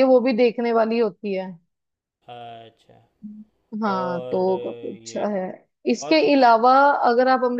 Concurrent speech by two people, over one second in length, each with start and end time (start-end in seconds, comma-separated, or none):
3.9-5.3